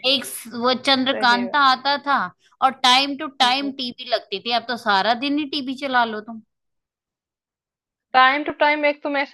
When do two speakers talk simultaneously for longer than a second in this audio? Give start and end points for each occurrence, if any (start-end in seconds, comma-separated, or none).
none